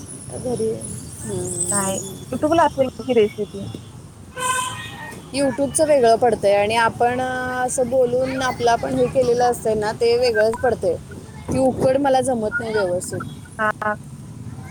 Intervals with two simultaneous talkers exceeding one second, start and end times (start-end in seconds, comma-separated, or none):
none